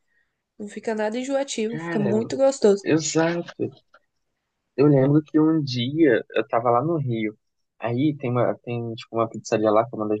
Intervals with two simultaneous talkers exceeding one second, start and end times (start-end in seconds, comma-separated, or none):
none